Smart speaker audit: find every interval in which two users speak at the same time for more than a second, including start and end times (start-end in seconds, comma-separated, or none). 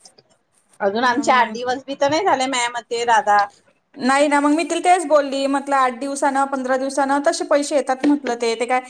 none